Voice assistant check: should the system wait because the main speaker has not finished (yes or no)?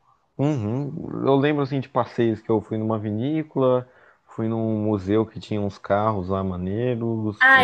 no